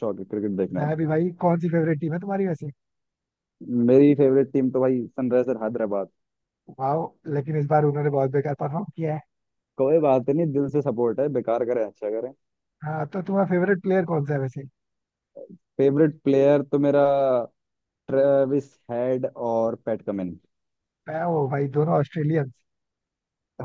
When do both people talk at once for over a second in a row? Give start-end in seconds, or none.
none